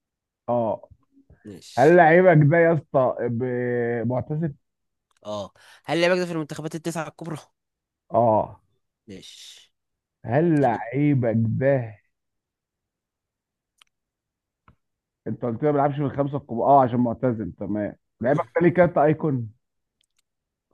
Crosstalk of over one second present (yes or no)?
no